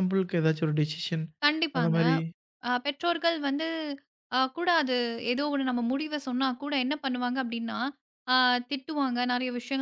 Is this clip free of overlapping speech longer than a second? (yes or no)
yes